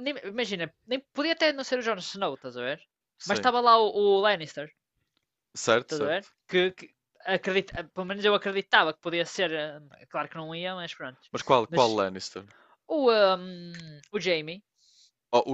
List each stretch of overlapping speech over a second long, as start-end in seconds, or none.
none